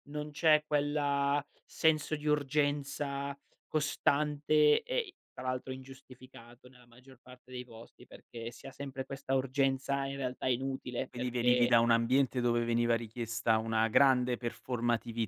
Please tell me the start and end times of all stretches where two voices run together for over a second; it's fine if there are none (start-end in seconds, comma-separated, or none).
none